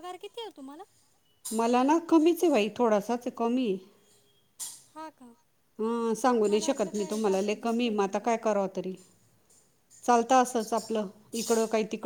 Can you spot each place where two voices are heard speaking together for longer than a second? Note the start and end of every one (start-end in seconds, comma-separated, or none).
6.5-8.1